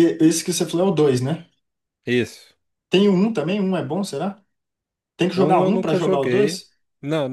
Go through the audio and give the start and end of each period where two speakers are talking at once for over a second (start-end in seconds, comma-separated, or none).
5.3-6.6